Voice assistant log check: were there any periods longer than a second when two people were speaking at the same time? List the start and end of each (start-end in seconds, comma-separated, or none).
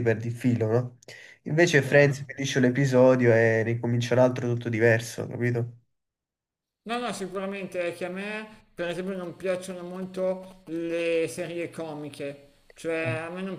none